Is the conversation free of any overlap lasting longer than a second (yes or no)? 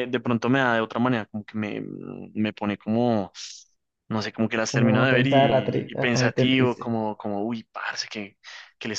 no